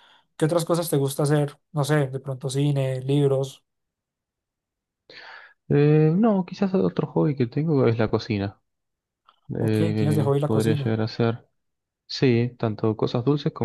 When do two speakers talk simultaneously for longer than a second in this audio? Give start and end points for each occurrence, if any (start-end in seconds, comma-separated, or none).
9.6-11.0